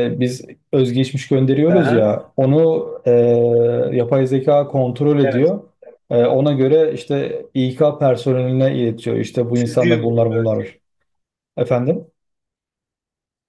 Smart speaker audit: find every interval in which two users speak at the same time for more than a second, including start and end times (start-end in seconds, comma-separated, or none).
9.5-10.7